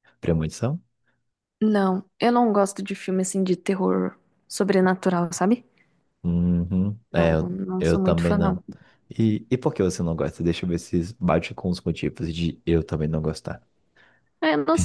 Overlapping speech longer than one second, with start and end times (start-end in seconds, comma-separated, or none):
7.1-8.6